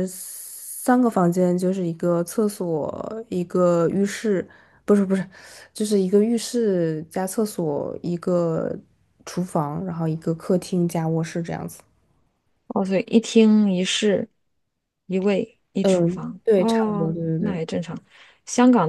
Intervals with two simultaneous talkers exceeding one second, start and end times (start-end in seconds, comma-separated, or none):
15.8-17.6